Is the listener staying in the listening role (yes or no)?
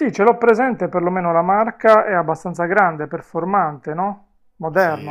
no